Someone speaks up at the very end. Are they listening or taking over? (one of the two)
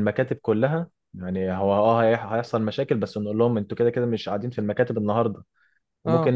listening